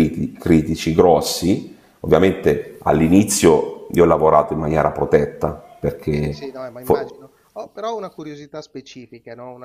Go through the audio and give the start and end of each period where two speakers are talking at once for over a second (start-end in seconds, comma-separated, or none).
none